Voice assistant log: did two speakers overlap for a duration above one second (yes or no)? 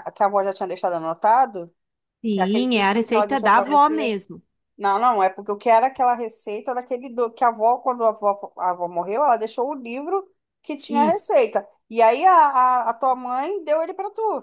yes